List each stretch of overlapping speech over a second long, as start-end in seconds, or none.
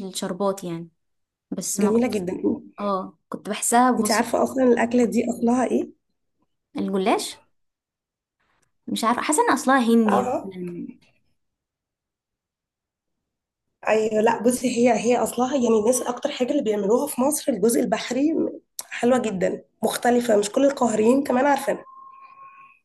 none